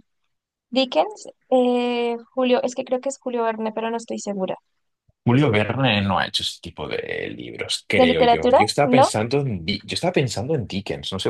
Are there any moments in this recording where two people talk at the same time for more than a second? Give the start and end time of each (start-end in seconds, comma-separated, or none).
7.9-9.2